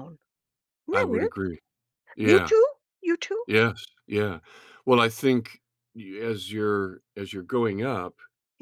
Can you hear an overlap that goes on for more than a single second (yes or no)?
no